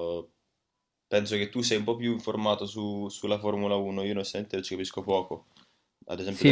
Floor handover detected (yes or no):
yes